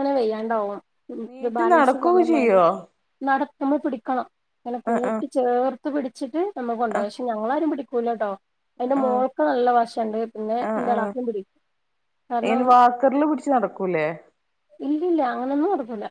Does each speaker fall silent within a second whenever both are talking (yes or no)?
no